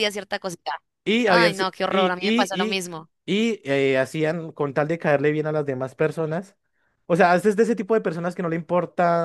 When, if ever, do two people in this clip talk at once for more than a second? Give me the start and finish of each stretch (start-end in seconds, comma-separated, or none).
1.2-2.8